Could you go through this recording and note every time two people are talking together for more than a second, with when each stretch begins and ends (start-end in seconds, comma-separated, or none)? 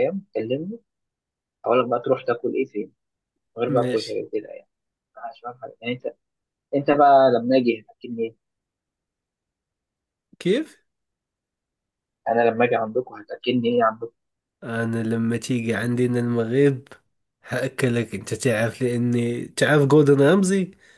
none